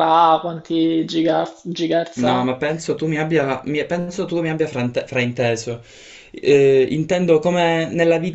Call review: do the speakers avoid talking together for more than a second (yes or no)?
yes